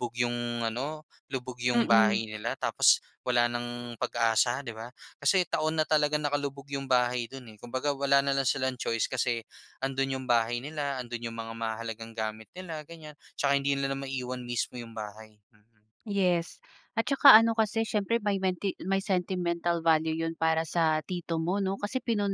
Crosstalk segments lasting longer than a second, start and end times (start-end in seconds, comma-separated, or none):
none